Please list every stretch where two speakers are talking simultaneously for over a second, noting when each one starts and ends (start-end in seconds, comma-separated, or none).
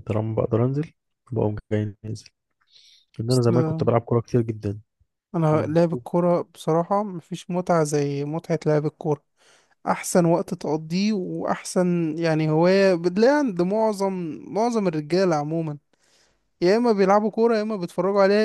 none